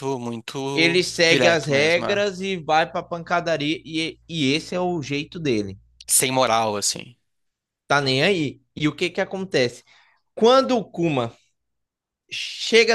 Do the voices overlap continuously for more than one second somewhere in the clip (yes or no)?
yes